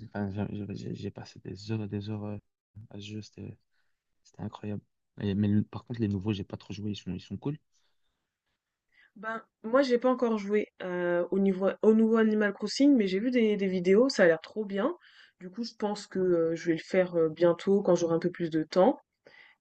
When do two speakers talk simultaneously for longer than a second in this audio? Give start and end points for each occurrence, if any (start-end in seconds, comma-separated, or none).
none